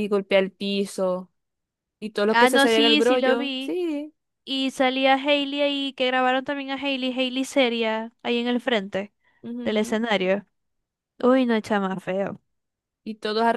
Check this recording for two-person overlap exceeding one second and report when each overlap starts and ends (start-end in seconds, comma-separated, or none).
2.3-3.8